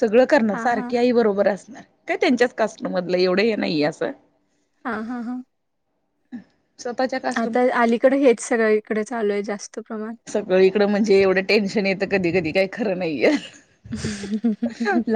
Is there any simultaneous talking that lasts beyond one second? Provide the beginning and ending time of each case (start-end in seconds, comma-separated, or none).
none